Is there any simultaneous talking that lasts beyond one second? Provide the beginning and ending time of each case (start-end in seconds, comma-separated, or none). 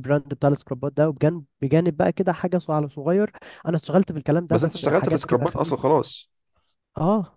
4.5-5.9